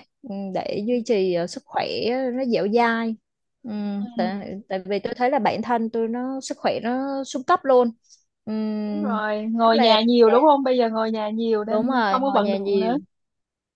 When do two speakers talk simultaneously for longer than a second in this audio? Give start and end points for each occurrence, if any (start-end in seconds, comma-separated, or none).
11.6-12.9